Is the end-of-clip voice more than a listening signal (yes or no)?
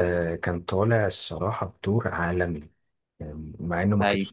no